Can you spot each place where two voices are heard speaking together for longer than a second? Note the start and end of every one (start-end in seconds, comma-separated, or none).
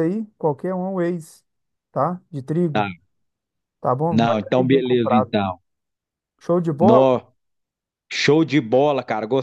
4.1-5.4